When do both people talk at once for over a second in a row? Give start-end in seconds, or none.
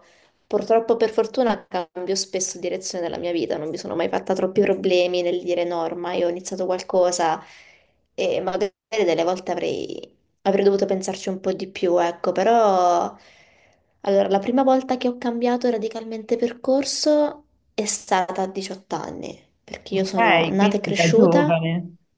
19.9-21.6